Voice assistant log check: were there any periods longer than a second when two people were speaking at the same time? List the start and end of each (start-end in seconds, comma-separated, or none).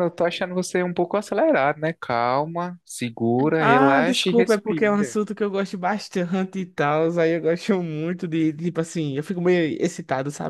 3.6-5.2